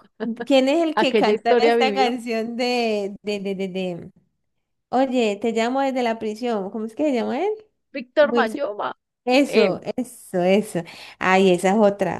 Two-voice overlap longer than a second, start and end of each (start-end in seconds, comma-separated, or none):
0.9-2.1